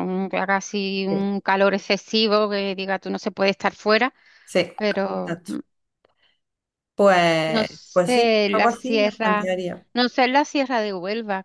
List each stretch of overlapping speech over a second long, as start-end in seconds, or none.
7.5-9.5